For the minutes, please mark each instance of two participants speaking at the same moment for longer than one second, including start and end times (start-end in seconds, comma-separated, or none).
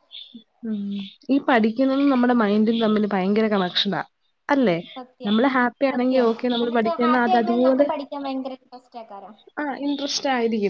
5.9-7.9